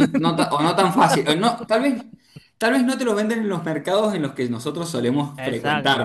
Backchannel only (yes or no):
no